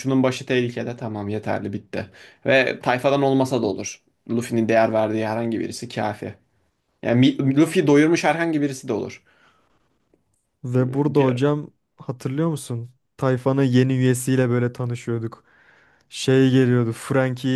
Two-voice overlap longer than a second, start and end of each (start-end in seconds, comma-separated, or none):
none